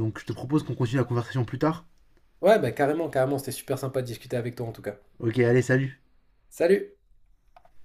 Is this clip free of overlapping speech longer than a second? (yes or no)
yes